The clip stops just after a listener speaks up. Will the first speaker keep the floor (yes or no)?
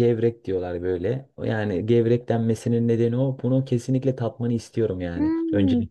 no